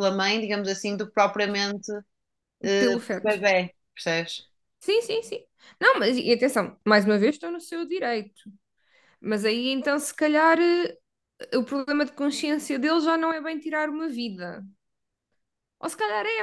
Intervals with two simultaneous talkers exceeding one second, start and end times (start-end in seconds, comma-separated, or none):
none